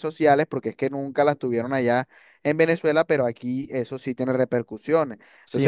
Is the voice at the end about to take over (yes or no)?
yes